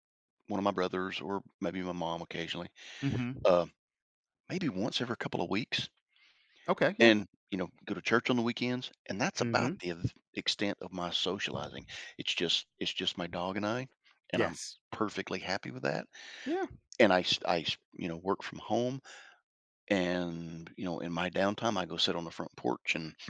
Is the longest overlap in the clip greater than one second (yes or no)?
no